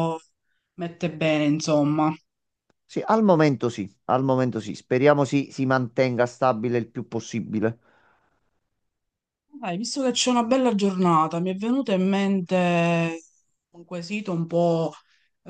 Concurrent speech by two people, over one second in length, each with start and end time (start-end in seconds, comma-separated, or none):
none